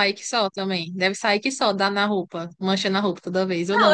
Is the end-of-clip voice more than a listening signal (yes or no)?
yes